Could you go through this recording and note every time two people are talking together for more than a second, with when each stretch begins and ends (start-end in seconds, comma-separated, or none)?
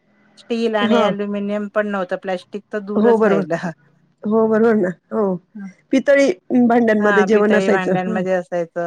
7.0-8.2